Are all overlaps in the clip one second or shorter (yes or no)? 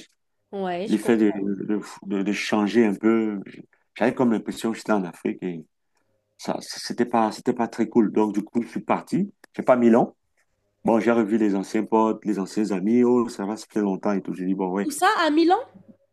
yes